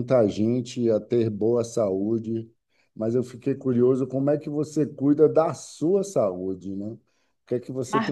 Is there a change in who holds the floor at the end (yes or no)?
no